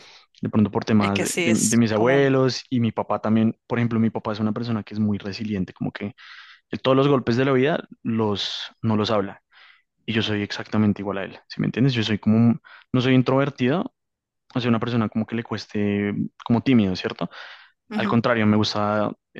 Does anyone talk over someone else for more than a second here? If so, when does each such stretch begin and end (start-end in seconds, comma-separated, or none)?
1.0-2.3